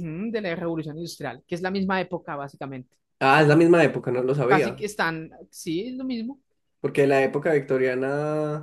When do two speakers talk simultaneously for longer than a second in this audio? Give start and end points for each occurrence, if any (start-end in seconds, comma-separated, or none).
none